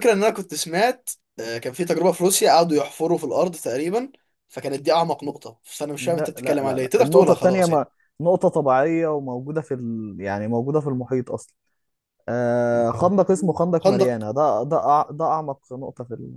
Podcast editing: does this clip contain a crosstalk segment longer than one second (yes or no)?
yes